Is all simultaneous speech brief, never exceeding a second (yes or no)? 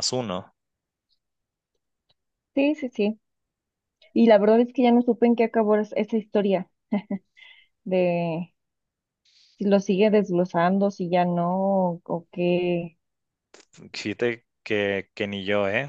yes